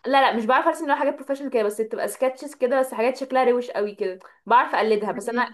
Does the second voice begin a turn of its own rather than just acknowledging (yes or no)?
no